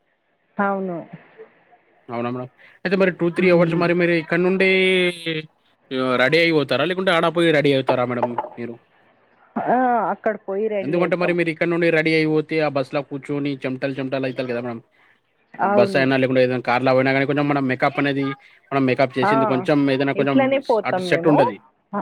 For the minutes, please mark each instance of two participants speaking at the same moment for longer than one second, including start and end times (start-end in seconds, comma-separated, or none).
none